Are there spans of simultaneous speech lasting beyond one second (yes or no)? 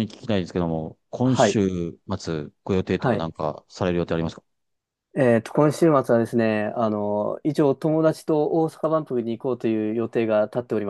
no